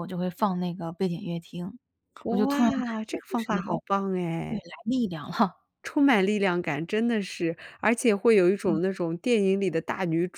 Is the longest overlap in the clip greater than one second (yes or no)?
yes